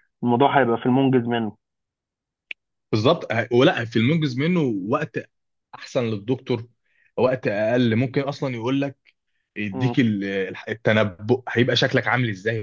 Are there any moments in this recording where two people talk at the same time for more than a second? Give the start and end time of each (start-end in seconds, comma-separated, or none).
none